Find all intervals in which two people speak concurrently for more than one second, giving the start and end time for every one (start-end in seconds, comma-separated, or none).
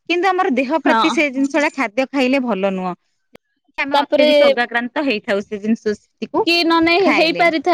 none